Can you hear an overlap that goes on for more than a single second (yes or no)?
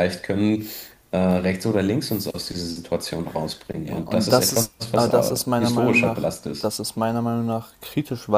yes